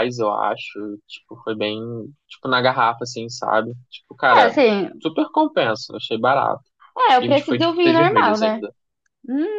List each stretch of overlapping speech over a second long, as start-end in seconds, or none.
7.2-8.6